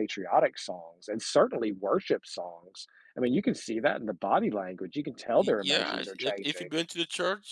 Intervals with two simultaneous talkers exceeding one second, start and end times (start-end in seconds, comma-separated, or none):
5.4-6.7